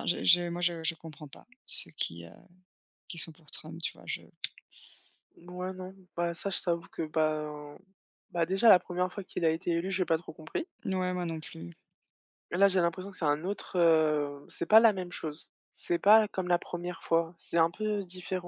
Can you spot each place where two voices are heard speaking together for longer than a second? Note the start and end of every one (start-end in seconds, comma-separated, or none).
none